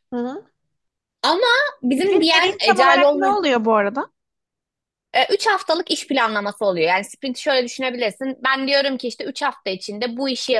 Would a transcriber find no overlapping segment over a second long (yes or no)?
no